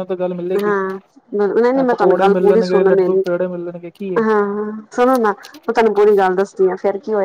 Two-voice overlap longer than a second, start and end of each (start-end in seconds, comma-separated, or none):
1.9-3.2